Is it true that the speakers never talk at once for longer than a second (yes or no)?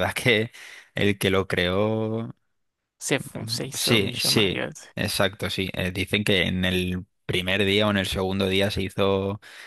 no